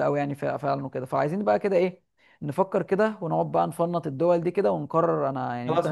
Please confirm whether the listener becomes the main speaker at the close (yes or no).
yes